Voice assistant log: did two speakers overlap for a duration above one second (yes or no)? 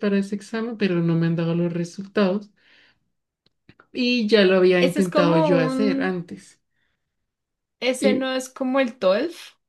yes